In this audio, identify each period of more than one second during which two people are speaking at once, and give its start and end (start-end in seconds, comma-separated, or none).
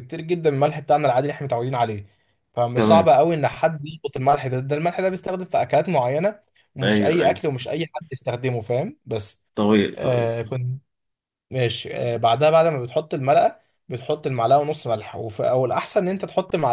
none